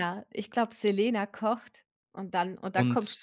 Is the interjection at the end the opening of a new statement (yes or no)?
no